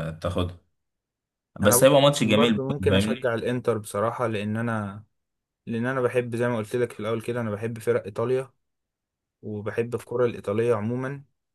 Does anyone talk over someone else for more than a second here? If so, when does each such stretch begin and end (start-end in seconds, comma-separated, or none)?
1.6-3.2